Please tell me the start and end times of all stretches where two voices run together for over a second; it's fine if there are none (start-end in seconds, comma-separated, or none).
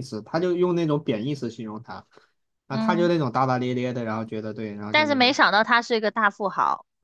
none